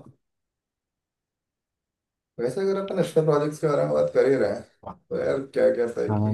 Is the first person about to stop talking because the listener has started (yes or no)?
no